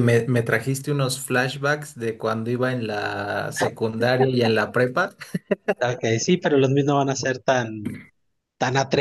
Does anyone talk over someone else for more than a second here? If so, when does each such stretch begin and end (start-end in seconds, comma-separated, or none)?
none